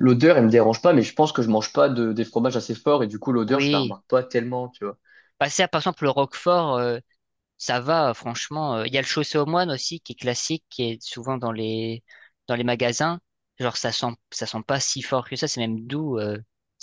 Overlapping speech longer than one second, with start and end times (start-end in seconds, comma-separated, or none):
none